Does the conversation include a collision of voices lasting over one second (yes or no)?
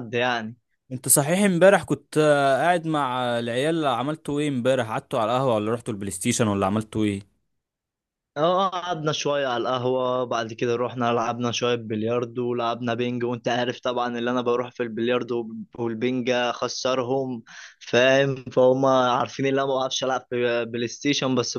no